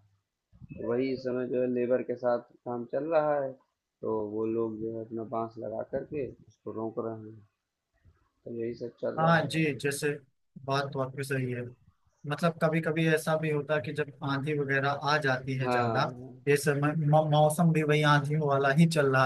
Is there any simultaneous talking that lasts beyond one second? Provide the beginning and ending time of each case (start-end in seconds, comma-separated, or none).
none